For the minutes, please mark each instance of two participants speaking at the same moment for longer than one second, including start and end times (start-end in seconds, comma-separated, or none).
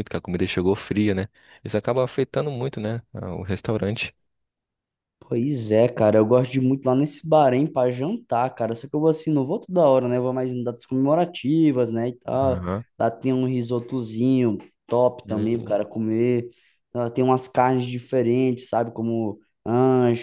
none